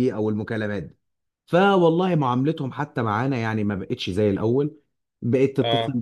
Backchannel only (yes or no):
yes